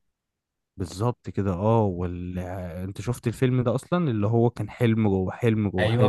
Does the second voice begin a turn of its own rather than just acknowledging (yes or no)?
yes